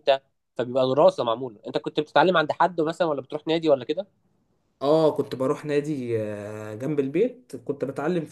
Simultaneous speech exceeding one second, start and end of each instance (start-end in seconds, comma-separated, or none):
none